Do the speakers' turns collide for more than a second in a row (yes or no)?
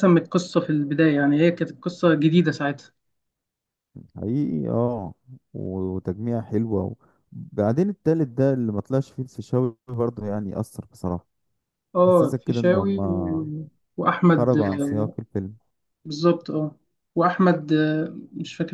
yes